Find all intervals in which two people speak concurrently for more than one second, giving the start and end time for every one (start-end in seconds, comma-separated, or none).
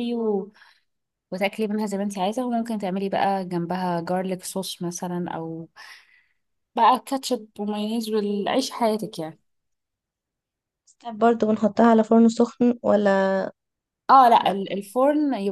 none